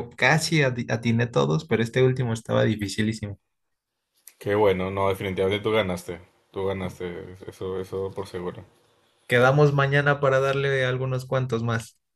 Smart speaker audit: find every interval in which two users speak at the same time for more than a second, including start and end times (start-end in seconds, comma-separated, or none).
none